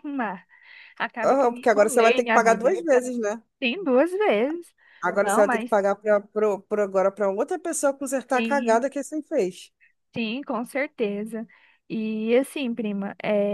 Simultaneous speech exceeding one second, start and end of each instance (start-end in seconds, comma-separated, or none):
1.2-2.8